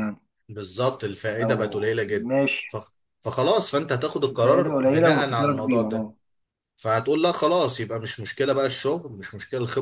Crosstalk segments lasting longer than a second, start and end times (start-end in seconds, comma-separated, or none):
4.3-6.1